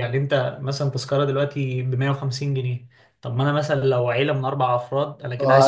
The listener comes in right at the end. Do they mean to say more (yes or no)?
yes